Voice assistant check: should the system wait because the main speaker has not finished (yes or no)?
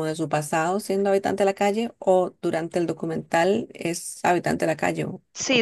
no